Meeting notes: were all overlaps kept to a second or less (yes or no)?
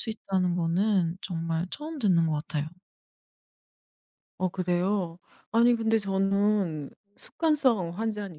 yes